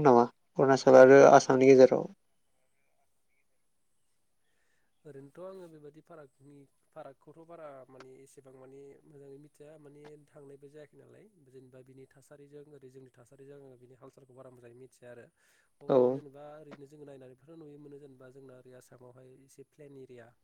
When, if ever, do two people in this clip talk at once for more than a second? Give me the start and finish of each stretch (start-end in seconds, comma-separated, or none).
none